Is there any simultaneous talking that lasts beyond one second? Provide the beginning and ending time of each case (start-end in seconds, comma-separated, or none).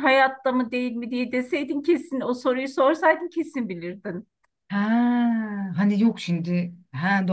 none